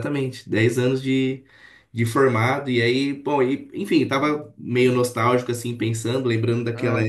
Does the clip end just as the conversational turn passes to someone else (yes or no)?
no